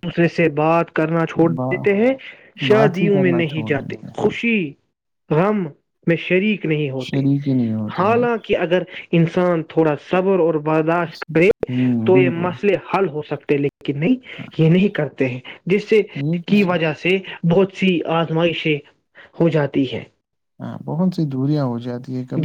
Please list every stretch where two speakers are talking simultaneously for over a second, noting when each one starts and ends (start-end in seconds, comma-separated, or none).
2.7-4.1